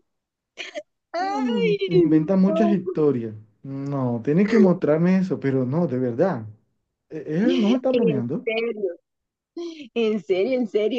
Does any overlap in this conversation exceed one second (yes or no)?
yes